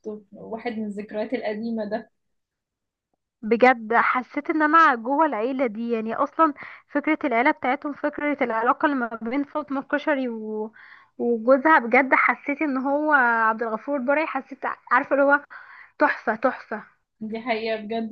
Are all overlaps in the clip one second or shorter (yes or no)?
yes